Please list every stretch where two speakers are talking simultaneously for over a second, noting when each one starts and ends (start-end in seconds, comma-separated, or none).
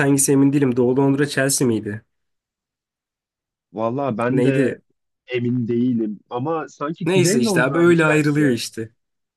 7.0-8.6